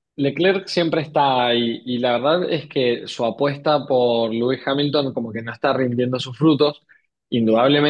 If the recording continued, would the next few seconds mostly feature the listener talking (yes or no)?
no